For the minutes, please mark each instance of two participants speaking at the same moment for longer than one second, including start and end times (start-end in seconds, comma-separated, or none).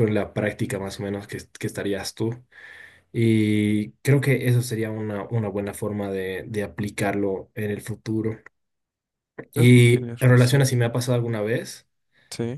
9.5-10.8